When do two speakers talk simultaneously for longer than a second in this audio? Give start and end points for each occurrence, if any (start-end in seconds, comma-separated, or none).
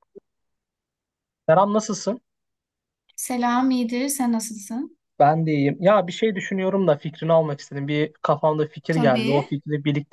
none